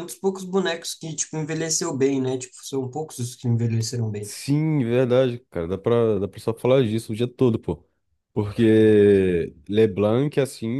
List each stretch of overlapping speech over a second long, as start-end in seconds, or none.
none